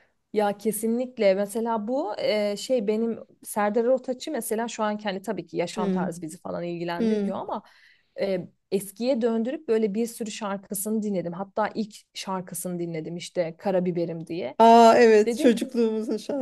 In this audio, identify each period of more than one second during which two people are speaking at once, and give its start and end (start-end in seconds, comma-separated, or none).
none